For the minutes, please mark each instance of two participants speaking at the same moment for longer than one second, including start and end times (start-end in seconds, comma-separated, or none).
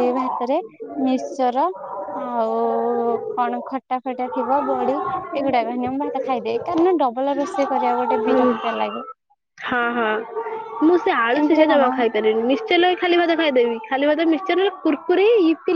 none